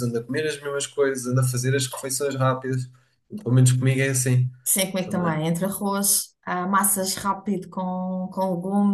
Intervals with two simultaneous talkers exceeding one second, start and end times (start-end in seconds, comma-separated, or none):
none